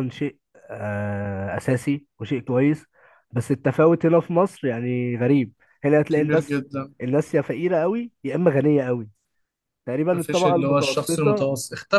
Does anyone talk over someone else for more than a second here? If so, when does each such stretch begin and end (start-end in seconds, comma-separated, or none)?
10.1-11.5